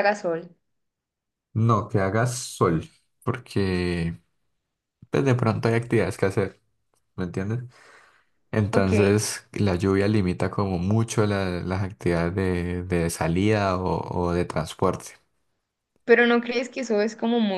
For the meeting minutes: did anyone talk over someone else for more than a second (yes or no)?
no